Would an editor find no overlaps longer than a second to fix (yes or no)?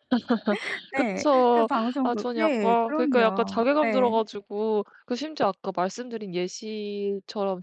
no